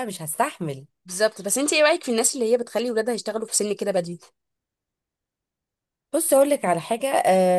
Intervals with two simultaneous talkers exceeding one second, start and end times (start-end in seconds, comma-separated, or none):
none